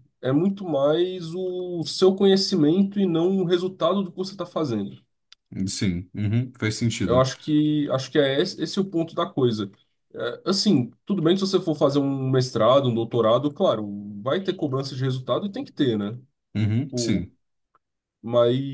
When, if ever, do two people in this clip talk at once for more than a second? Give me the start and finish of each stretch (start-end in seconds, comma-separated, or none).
none